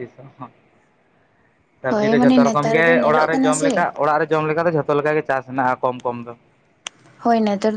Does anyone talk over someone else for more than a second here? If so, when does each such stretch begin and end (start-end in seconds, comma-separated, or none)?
1.9-3.7